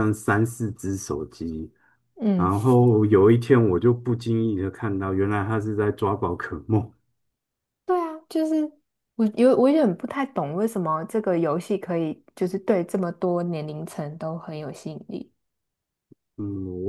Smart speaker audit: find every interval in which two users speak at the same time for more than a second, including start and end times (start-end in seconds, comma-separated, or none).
none